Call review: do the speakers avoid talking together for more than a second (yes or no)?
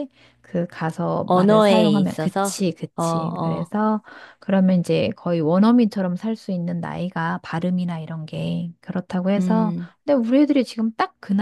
no